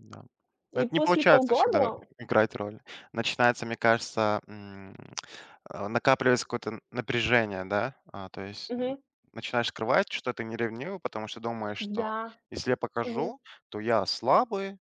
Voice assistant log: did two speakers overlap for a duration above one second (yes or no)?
yes